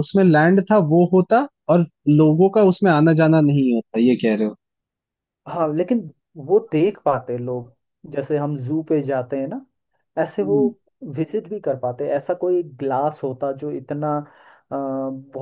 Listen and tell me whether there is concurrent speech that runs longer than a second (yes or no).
no